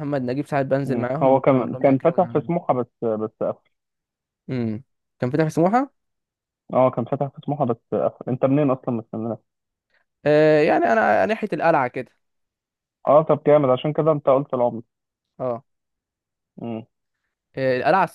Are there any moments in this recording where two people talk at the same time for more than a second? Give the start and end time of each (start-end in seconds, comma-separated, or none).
0.8-2.5